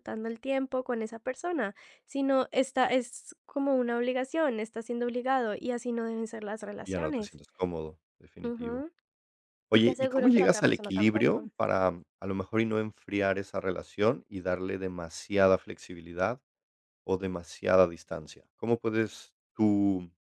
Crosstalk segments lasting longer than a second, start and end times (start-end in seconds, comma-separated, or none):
9.7-11.5